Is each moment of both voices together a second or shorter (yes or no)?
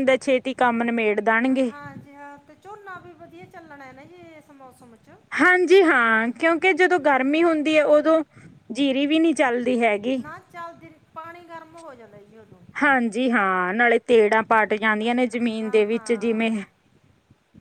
no